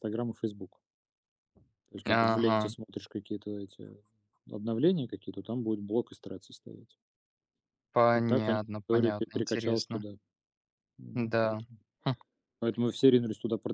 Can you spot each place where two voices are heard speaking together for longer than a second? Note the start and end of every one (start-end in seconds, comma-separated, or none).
8.1-10.0